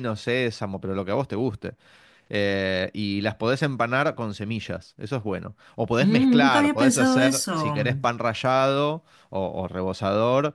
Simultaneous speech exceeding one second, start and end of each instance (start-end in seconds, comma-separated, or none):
6.0-7.8